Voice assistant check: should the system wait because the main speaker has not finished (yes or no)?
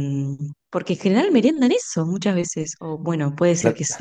yes